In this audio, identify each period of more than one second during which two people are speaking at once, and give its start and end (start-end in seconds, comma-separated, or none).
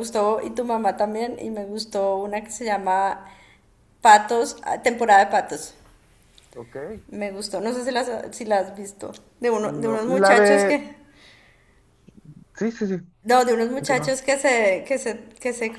9.6-10.8